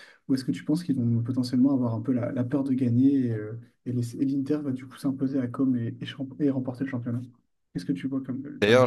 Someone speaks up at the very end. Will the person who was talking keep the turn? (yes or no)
no